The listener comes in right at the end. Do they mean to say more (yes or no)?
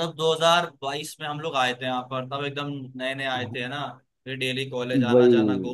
no